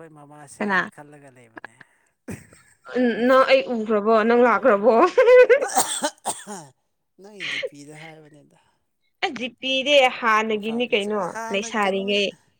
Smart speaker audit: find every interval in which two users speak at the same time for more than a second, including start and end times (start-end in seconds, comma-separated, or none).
10.4-12.1